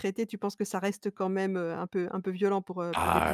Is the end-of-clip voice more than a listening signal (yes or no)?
yes